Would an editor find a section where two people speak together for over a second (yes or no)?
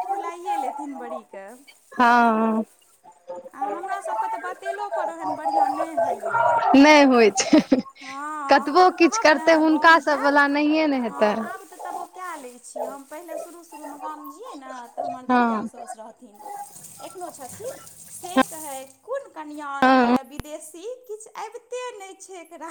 yes